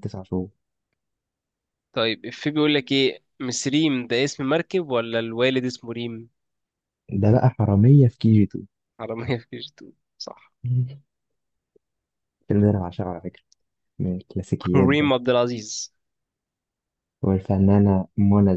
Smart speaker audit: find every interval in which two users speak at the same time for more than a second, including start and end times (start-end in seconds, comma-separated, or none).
none